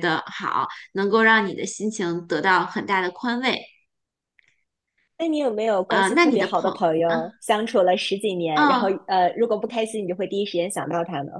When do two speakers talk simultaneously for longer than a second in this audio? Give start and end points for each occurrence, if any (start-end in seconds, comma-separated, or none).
5.9-7.3